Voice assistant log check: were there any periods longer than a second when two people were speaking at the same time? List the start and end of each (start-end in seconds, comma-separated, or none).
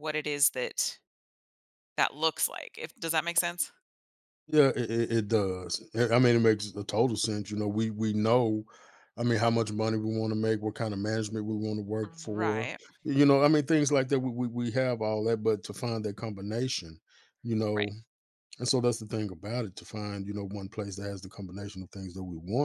none